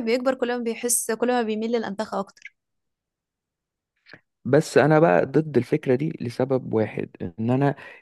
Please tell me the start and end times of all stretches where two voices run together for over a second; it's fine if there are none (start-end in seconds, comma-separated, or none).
none